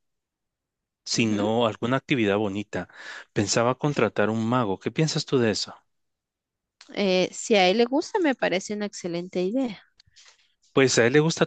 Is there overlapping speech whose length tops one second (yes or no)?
no